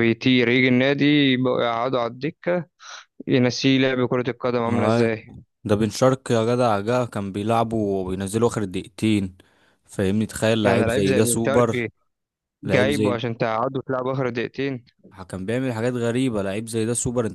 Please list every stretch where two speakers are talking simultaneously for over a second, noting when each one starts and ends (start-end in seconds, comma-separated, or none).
10.6-11.8